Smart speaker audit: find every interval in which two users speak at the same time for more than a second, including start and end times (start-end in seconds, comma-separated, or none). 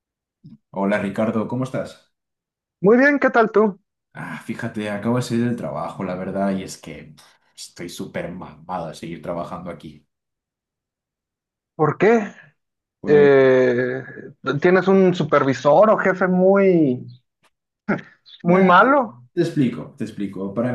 none